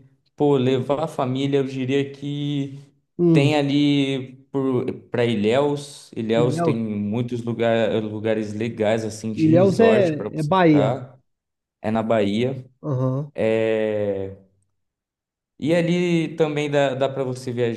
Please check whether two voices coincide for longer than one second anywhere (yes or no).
yes